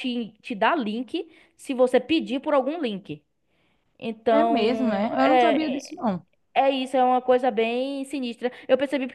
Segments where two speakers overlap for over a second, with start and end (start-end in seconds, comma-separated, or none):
4.3-6.0